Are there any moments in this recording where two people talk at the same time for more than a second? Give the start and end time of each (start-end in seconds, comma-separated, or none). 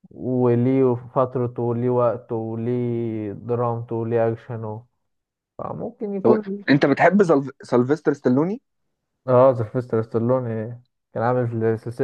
none